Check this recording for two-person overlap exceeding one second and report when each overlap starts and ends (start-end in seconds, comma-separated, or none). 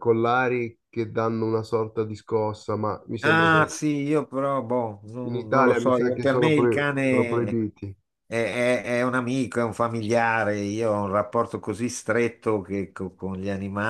5.3-7.5